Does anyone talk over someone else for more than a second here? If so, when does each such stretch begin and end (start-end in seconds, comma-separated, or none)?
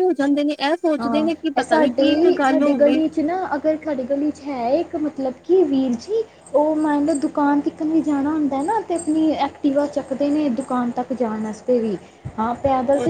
1.0-3.0